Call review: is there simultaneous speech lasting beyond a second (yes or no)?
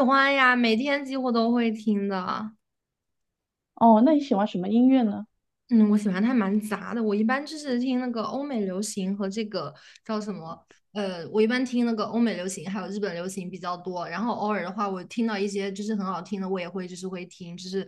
no